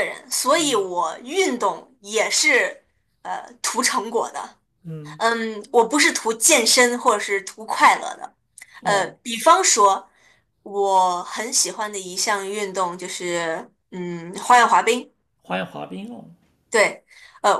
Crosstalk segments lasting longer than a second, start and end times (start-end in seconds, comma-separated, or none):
none